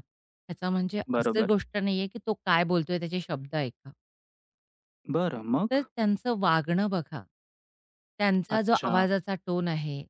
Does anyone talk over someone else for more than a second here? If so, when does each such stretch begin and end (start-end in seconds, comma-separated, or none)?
none